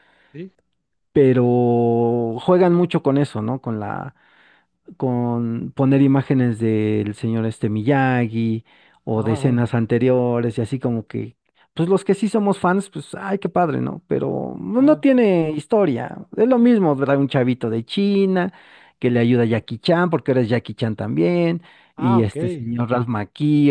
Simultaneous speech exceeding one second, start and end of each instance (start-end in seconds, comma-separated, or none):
none